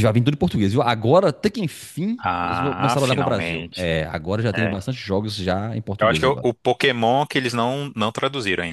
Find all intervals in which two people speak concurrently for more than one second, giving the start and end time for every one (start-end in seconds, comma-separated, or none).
2.2-3.8